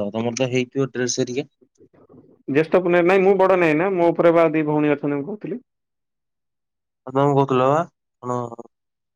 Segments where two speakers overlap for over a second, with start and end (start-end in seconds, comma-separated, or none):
none